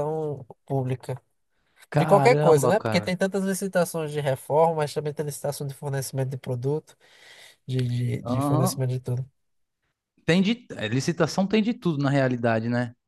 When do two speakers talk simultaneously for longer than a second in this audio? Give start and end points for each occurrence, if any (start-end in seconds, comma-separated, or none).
1.9-3.1